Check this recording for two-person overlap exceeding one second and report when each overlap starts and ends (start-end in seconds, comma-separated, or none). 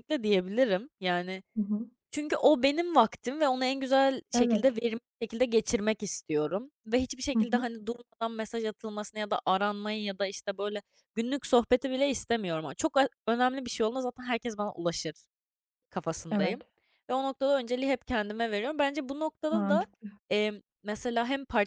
none